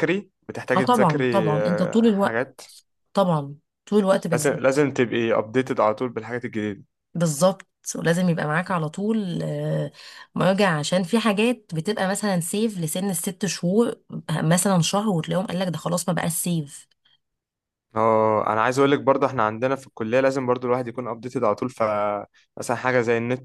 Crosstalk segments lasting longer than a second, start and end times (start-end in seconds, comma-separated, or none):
0.8-2.5